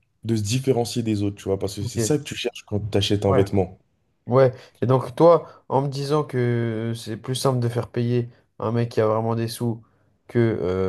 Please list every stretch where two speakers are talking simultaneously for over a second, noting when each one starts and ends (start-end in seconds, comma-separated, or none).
none